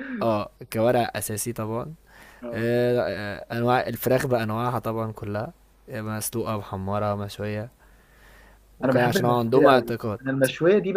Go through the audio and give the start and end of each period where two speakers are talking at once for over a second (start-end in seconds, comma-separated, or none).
8.8-10.2